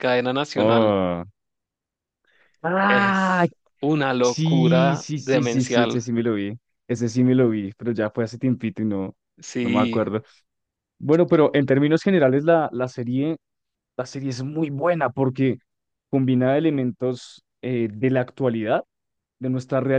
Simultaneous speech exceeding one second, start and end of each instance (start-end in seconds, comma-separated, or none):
4.2-6.0